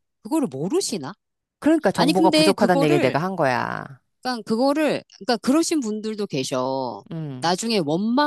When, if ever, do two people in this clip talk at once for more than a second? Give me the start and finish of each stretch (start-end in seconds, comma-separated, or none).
1.9-3.2